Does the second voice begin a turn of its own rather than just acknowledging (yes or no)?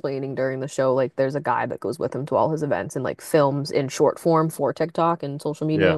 no